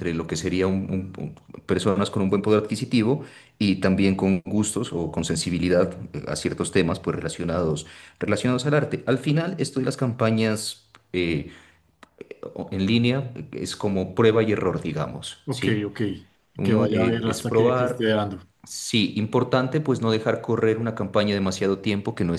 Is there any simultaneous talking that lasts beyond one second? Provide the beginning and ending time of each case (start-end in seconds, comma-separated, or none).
16.6-18.1